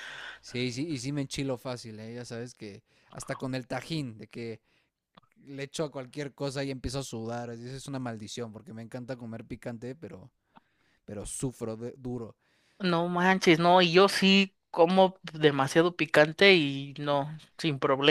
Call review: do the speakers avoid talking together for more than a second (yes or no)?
yes